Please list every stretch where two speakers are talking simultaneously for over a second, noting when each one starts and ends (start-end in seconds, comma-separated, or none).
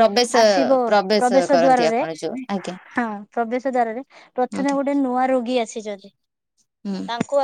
none